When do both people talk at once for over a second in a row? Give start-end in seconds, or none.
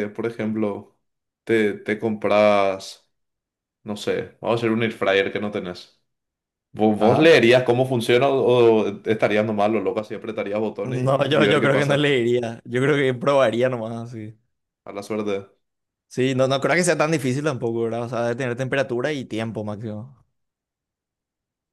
10.8-12.1